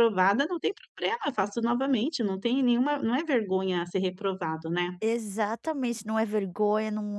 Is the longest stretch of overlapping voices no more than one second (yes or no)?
yes